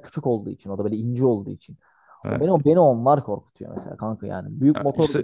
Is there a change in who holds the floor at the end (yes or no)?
no